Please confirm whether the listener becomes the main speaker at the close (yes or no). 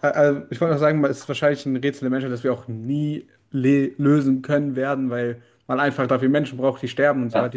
no